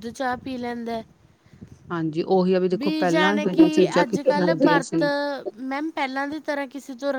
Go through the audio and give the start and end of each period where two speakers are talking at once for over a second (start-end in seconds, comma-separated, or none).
2.8-5.0